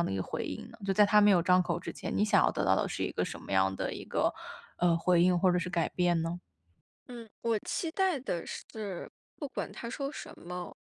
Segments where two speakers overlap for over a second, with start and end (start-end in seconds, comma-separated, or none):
none